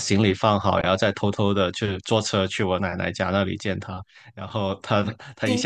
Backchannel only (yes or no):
yes